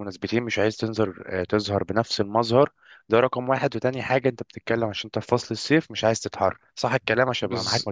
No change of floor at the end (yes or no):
no